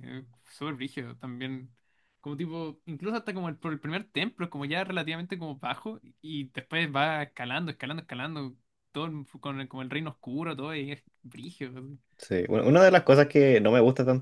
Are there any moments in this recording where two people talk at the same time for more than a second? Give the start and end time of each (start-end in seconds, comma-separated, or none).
none